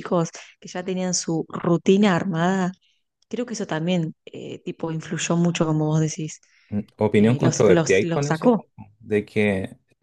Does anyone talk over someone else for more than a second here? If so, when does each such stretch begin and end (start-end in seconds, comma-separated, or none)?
7.1-8.7